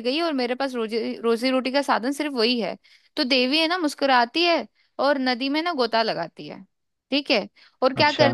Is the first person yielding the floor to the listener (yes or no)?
no